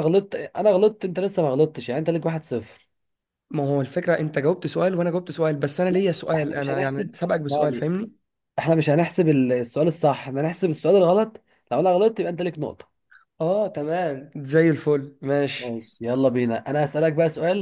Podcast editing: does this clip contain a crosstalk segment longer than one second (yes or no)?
yes